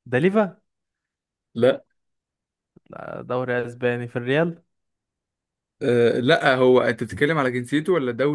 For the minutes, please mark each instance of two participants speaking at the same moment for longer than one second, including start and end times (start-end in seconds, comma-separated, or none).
none